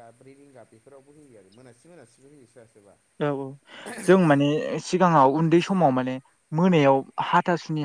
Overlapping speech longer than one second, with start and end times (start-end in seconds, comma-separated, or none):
none